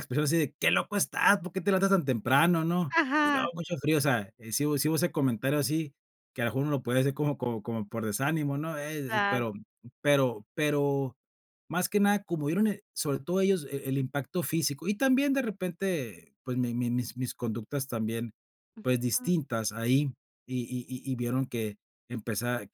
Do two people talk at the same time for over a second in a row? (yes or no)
no